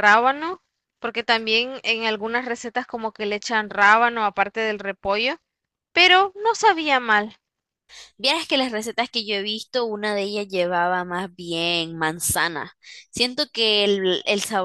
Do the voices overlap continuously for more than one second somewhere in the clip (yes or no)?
no